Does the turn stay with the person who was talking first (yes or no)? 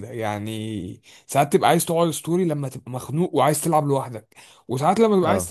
yes